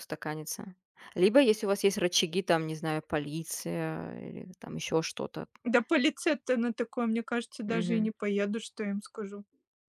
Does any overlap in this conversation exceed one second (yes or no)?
no